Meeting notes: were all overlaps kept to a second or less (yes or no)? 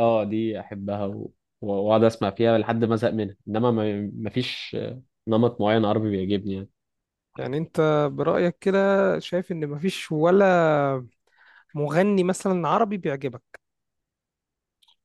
yes